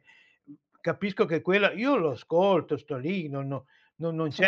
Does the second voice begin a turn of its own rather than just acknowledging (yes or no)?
no